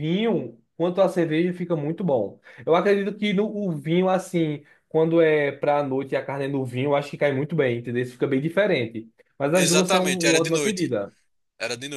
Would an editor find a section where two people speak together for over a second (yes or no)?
yes